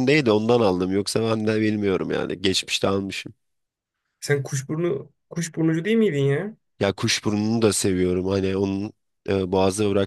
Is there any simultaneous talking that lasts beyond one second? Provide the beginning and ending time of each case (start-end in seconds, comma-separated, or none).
none